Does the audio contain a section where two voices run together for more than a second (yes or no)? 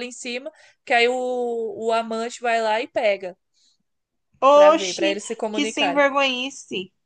yes